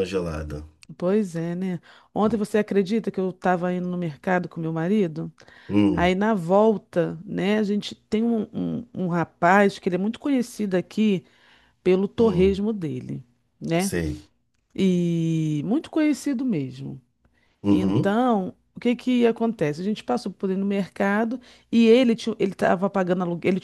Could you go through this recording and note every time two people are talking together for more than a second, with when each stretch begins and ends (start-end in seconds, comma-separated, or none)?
none